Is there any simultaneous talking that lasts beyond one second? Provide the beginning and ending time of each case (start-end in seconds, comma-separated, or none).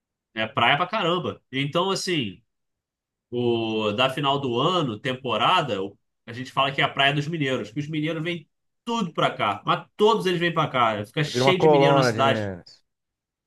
11.3-12.5